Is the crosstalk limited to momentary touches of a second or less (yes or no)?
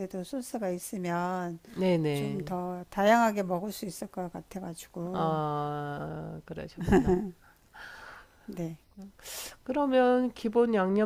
yes